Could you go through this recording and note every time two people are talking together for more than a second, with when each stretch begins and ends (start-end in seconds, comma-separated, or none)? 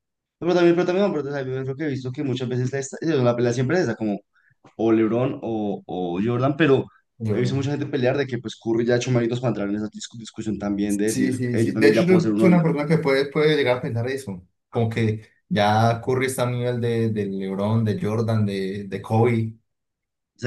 10.9-12.6